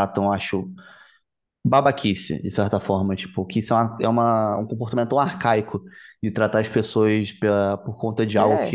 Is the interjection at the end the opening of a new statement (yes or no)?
no